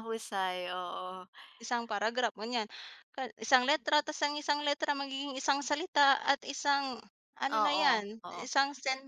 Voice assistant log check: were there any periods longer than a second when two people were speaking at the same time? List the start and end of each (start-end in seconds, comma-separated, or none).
none